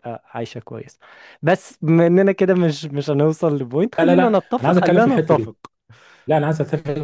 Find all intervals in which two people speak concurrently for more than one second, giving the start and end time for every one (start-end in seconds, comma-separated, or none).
4.0-5.5